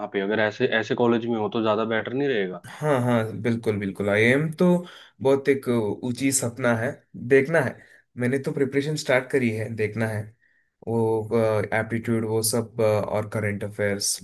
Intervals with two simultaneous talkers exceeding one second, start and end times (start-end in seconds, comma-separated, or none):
none